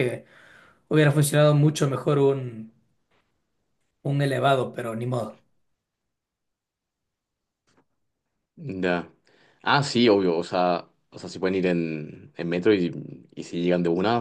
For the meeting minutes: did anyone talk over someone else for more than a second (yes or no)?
no